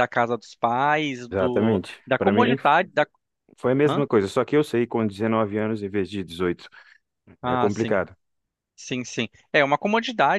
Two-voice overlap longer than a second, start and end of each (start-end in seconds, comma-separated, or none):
1.3-2.7